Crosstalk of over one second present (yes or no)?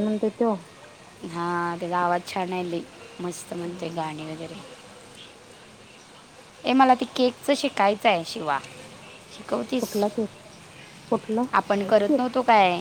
no